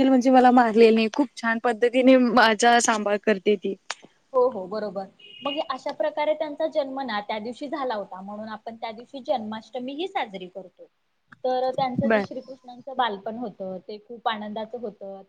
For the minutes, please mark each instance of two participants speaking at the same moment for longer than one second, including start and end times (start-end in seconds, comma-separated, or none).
none